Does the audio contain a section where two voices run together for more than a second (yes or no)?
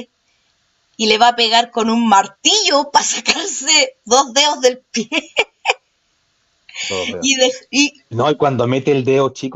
no